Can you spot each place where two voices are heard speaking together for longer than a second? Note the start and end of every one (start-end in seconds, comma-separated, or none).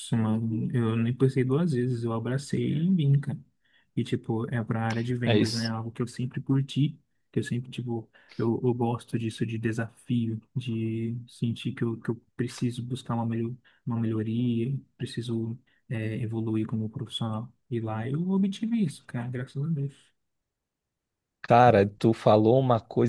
none